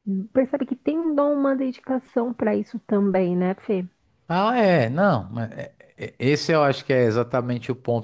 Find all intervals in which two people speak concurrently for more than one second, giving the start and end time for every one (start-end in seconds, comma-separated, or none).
none